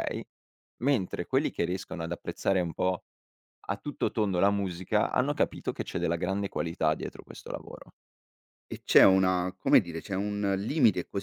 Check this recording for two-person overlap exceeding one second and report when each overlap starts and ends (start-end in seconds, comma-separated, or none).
none